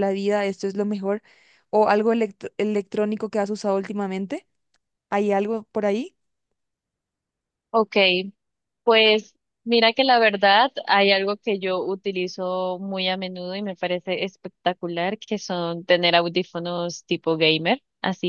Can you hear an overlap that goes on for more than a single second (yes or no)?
no